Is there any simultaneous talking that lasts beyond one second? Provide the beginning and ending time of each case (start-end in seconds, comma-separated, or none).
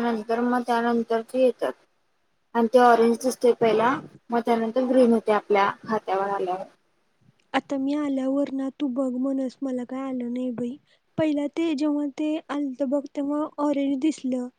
none